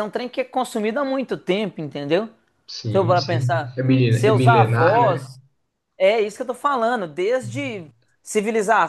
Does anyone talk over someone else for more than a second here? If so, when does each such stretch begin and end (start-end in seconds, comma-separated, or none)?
2.9-5.3